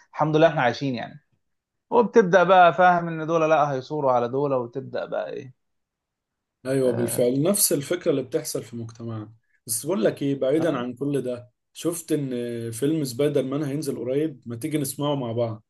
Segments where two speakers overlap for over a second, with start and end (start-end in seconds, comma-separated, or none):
none